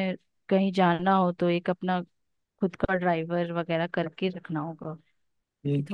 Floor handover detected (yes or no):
yes